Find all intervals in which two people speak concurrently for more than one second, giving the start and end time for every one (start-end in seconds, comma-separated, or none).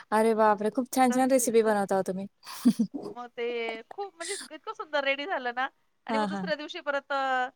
none